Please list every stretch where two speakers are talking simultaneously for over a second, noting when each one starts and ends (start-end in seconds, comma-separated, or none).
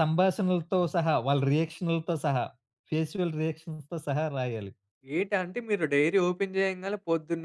none